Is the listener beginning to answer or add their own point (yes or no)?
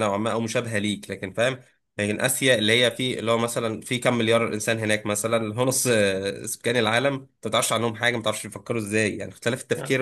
no